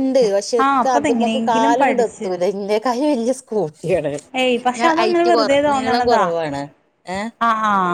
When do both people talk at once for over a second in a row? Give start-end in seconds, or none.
0.6-2.3